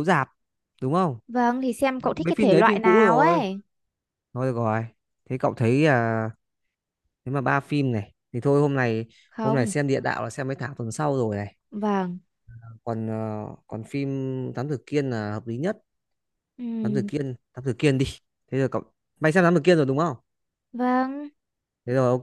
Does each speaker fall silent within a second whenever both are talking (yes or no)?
no